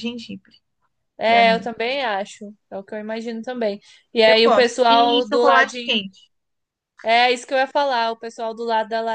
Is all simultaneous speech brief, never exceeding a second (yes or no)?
no